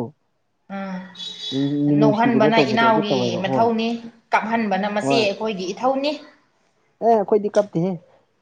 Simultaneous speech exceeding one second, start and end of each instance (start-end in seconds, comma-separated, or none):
2.0-3.6